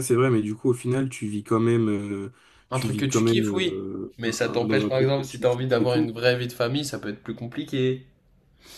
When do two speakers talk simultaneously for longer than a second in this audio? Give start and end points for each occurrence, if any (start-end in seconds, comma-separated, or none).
2.7-6.1